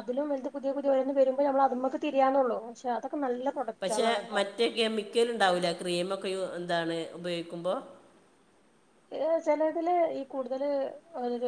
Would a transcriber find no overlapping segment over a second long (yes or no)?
yes